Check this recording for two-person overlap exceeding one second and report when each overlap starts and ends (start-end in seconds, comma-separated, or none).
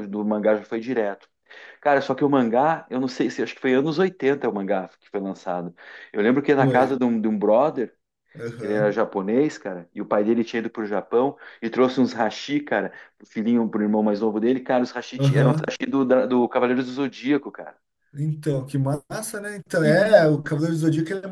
none